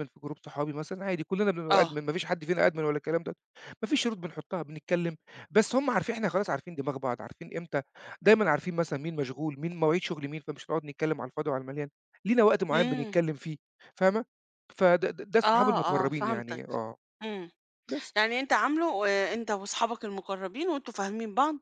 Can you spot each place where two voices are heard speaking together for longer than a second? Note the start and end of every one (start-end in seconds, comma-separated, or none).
15.4-16.6